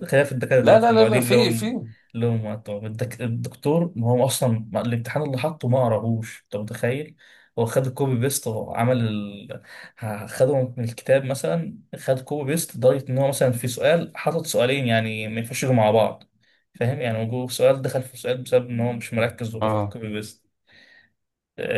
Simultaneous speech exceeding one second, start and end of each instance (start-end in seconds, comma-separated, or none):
0.6-1.8